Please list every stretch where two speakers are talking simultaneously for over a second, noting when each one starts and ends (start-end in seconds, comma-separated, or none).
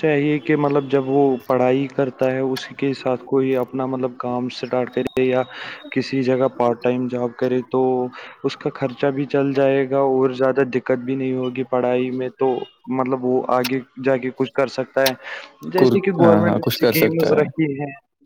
15.8-17.6